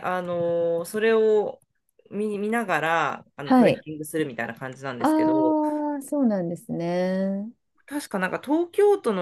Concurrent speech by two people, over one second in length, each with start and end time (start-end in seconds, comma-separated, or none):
none